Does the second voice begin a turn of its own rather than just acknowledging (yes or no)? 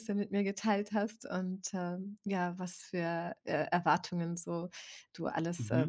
no